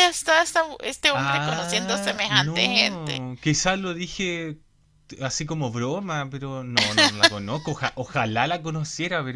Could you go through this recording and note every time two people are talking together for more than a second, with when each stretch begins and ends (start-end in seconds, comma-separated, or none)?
1.1-3.2